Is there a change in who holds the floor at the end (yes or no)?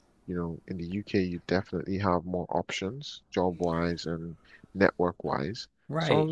yes